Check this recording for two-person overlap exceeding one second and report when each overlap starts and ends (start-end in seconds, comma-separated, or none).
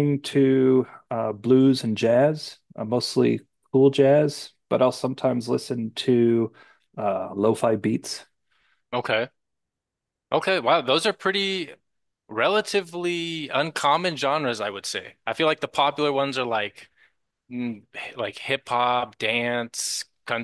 none